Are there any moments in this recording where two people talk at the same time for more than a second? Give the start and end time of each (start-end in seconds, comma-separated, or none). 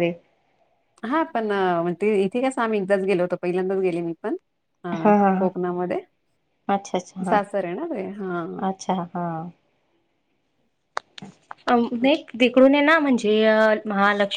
none